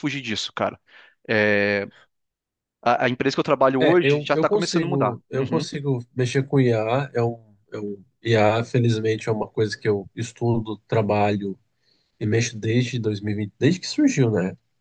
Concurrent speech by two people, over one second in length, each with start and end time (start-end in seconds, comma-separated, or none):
3.8-5.6